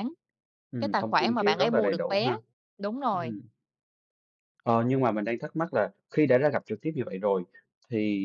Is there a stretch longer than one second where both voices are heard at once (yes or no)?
yes